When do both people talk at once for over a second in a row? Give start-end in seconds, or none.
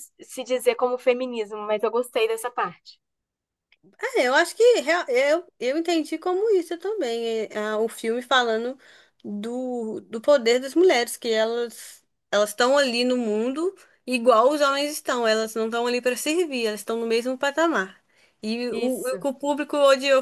none